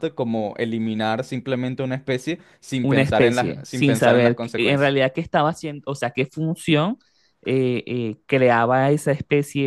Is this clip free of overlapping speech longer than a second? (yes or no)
no